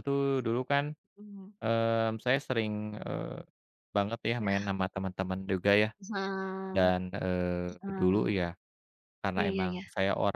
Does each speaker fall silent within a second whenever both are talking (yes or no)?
yes